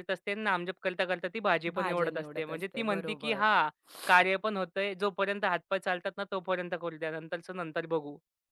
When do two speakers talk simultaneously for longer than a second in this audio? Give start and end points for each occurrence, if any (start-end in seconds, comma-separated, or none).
1.7-3.5